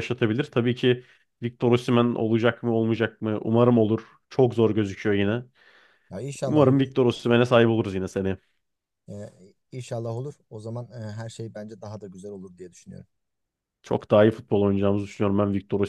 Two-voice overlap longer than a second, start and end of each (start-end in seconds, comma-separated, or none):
none